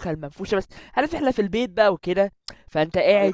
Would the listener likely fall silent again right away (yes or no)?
no